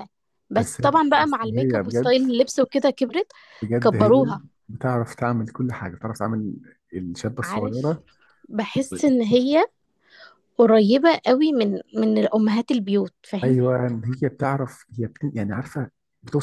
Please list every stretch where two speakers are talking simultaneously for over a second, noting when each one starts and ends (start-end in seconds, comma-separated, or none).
0.5-2.2